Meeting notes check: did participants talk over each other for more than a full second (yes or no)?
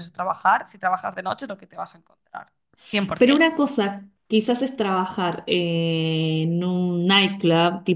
no